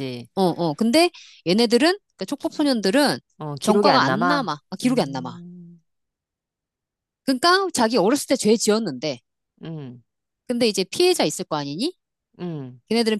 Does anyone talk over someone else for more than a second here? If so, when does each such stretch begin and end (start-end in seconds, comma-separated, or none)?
3.6-5.4